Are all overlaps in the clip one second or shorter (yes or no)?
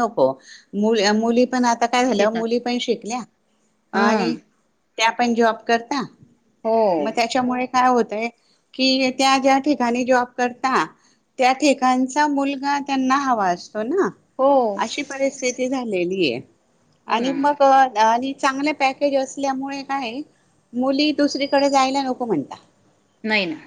yes